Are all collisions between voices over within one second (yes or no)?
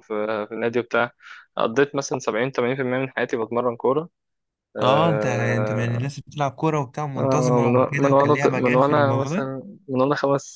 no